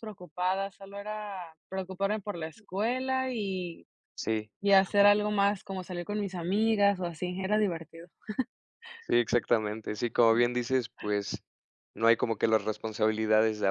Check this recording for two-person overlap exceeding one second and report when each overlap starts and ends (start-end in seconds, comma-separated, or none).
none